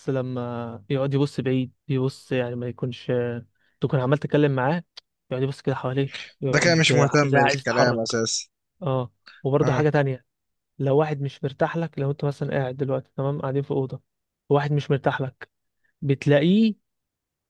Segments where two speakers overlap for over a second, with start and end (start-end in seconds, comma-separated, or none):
6.5-8.0